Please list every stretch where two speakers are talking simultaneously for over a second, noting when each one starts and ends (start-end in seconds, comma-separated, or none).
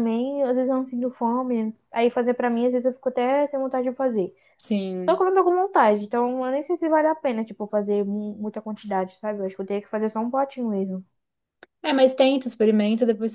none